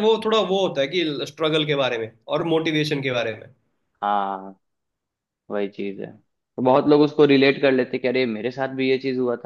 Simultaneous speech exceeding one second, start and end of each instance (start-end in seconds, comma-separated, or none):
none